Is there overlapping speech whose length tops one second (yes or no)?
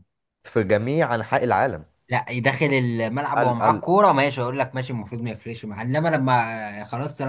no